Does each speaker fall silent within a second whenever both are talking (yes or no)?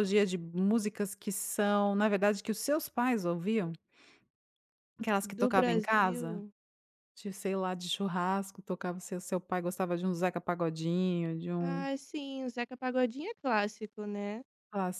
no